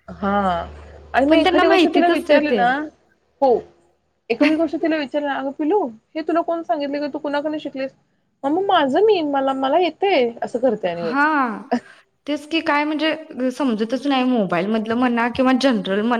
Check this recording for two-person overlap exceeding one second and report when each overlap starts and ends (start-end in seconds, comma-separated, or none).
1.3-2.6